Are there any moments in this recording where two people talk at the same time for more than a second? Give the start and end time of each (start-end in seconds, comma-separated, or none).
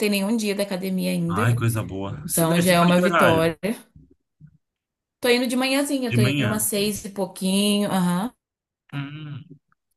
2.2-3.5